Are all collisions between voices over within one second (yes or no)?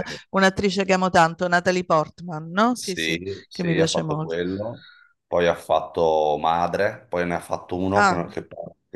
no